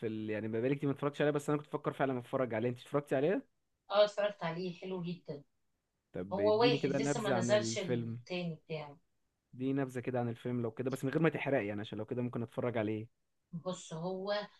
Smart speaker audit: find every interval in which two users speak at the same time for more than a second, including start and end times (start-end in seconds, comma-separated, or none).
6.3-8.2